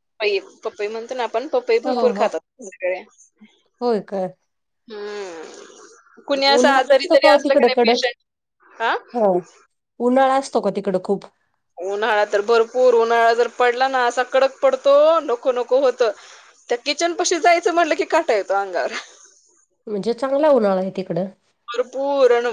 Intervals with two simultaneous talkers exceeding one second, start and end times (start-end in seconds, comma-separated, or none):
6.4-8.0